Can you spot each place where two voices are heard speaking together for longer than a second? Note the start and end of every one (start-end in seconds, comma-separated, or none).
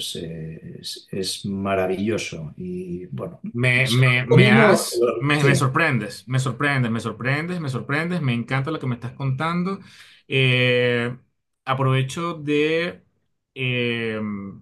3.8-5.6